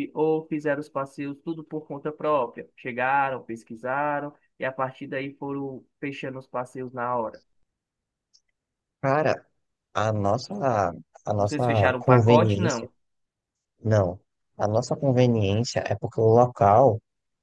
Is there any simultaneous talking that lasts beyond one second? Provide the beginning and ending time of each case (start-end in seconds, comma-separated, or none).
11.4-12.9